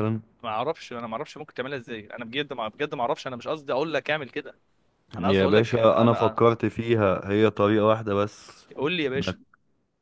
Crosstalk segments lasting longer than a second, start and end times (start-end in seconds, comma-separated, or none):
5.2-6.4